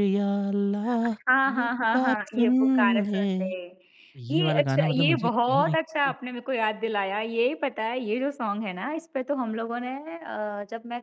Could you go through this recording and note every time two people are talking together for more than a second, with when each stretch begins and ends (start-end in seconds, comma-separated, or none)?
1.5-3.5, 4.3-6.1